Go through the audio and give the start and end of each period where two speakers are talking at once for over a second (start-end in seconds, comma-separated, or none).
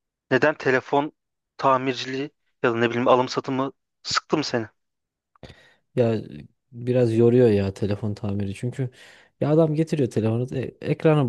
none